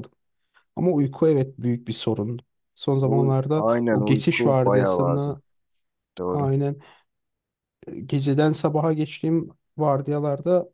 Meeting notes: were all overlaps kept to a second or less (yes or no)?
no